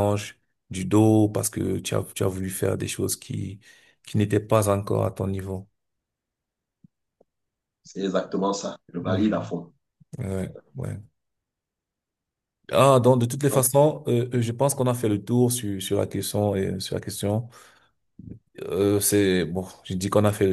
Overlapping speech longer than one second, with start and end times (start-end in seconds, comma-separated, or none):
none